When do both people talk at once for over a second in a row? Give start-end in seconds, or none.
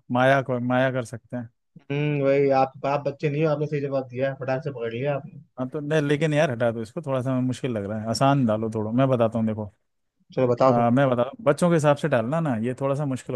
none